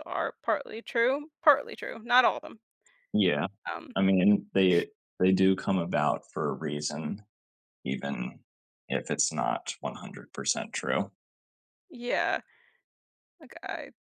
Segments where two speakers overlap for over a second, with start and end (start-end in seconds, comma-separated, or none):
none